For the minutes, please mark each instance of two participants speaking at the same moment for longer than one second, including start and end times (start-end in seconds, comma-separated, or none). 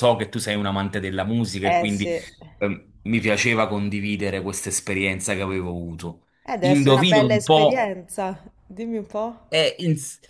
6.5-7.9